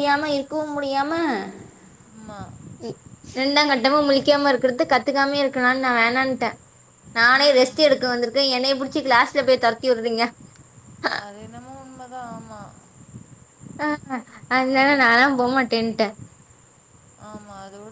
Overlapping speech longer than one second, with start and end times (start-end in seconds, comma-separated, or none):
none